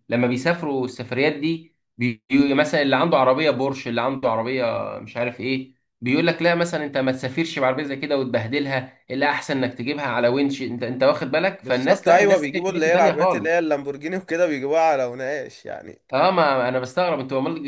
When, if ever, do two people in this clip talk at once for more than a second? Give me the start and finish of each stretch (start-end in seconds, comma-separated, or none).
11.6-13.7